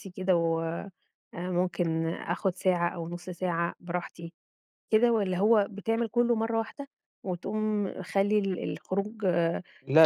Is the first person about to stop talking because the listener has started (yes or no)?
yes